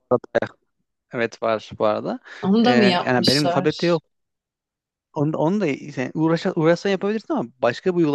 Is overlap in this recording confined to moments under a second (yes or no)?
no